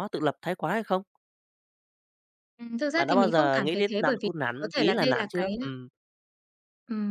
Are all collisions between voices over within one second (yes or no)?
no